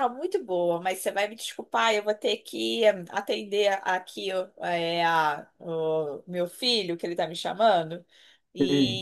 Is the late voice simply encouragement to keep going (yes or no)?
yes